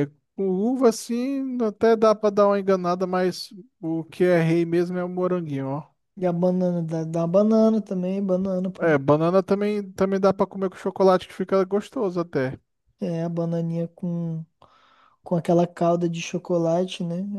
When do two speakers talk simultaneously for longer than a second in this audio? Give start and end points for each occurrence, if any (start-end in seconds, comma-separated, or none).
none